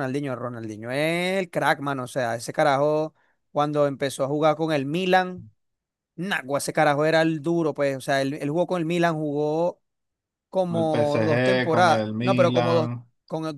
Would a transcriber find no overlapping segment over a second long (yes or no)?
no